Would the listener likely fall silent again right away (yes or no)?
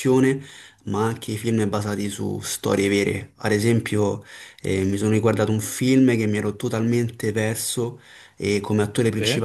yes